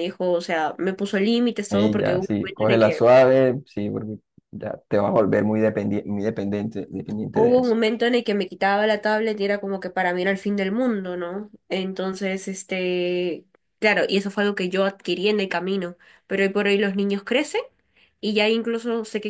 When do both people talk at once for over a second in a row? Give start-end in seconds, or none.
1.7-3.1